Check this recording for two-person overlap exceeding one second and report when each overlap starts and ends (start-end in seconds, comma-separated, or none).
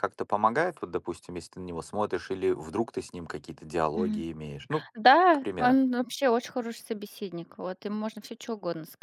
none